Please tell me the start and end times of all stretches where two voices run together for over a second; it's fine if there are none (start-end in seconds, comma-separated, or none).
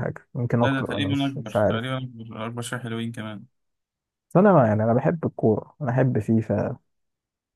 0.6-1.9